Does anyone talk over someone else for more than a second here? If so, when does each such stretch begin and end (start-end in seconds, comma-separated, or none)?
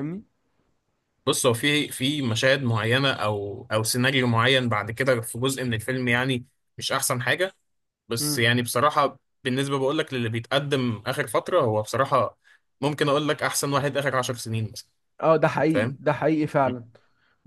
none